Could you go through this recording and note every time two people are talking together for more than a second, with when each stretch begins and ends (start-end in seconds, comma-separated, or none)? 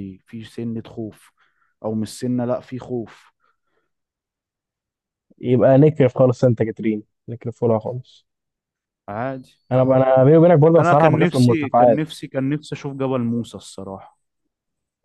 10.8-12.1